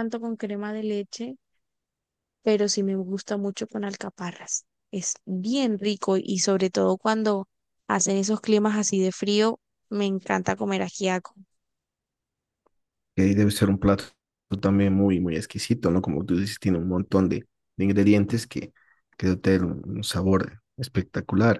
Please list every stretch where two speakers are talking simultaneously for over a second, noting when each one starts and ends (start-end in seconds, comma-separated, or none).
none